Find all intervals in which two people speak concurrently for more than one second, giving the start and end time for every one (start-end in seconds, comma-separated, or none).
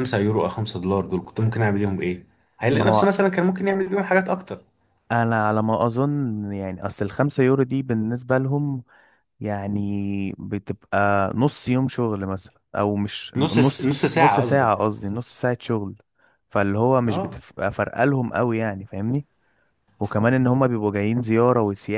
13.4-14.7